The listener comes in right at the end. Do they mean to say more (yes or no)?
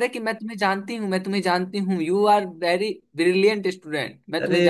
yes